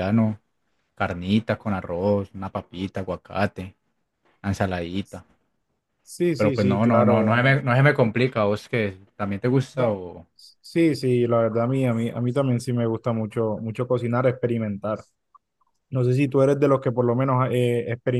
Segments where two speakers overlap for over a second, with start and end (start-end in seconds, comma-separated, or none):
6.3-7.6